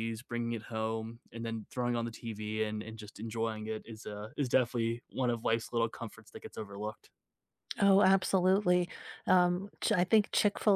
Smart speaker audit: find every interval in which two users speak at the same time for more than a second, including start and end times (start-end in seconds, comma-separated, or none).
none